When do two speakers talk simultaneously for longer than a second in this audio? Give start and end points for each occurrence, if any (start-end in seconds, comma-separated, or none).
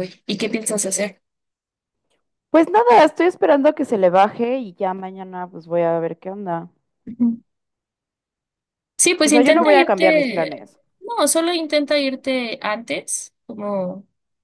9.2-10.6